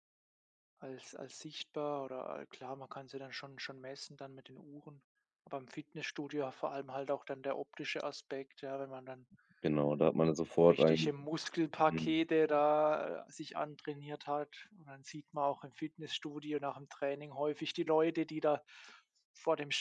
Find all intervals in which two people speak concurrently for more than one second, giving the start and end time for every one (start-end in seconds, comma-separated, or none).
none